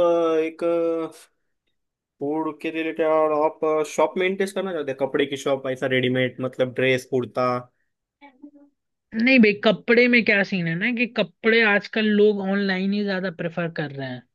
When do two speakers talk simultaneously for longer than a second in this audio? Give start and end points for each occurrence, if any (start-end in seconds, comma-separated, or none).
none